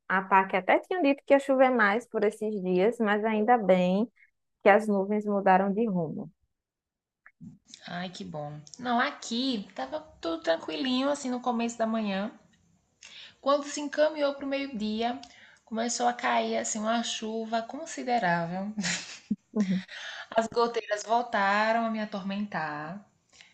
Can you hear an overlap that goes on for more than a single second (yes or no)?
no